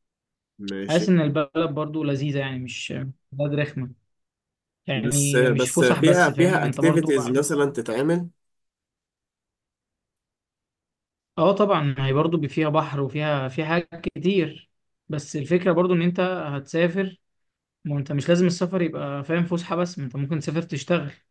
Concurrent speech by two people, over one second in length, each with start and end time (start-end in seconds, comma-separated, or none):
4.9-7.4